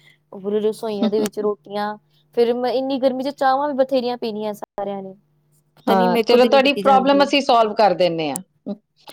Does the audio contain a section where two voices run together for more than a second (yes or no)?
yes